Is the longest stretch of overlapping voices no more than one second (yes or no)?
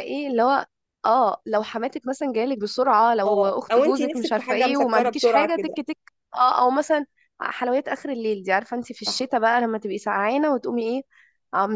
no